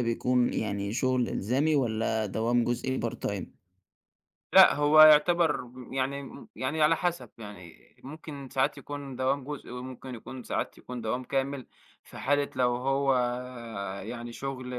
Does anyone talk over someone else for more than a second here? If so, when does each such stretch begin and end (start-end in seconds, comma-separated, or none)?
none